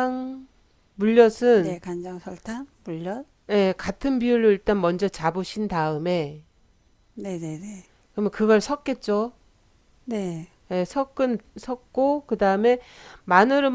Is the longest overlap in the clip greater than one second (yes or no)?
no